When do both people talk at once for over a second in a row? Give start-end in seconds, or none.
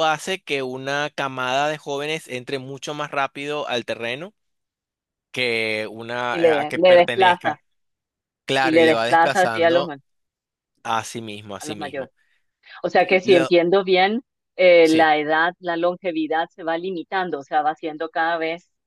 6.3-7.6, 8.6-9.9